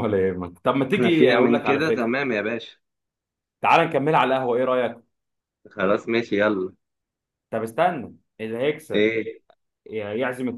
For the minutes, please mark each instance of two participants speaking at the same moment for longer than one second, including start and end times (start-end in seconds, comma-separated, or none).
0.9-2.2